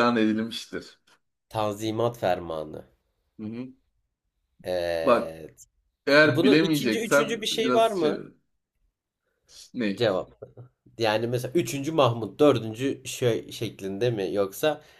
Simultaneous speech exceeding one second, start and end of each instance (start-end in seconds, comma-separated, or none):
6.3-8.2